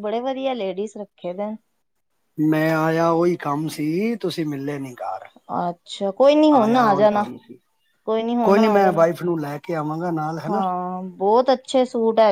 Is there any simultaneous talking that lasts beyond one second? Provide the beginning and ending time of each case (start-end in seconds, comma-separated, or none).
none